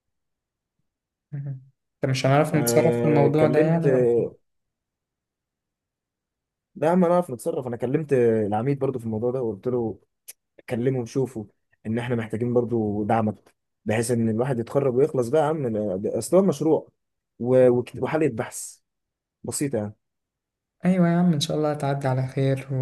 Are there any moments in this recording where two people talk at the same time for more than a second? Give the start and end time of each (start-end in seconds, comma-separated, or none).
2.5-3.9